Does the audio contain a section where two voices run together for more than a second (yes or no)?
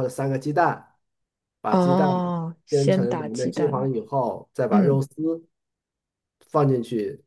yes